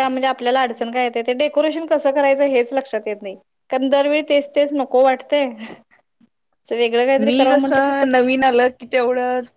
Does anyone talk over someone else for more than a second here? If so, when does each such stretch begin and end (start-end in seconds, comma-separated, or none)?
none